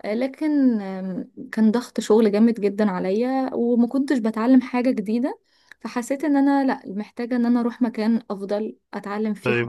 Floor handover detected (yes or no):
yes